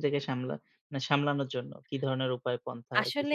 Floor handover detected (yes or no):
yes